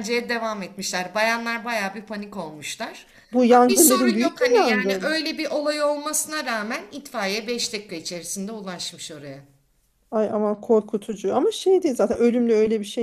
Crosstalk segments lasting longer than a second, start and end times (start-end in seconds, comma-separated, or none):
3.5-5.2